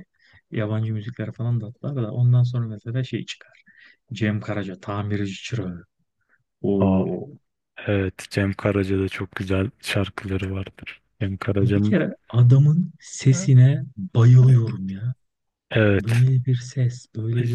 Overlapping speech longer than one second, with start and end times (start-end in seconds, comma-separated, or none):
none